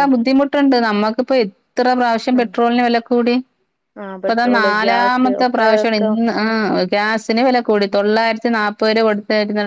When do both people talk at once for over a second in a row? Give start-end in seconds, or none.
4.0-6.1